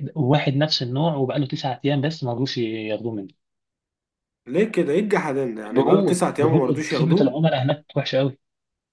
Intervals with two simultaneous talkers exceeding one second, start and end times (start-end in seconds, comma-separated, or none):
5.7-7.3